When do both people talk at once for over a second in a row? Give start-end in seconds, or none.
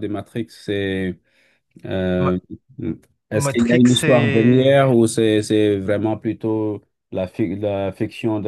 3.3-4.7